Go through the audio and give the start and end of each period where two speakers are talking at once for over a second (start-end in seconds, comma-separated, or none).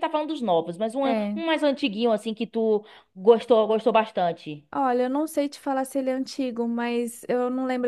none